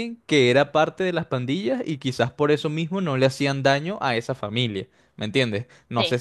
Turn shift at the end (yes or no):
no